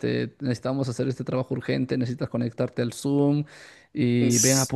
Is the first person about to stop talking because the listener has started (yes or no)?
no